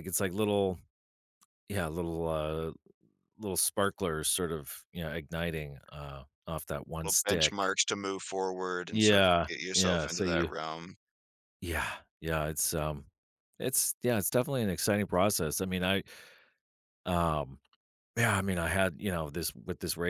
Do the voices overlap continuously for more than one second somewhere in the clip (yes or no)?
yes